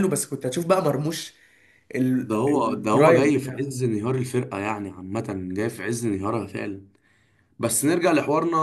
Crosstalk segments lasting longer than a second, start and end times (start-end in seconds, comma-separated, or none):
2.2-3.8